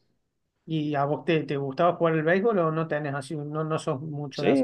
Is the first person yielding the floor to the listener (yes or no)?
yes